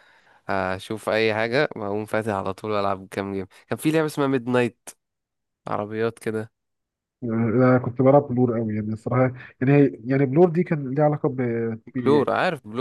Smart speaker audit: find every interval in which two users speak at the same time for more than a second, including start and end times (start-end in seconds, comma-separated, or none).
none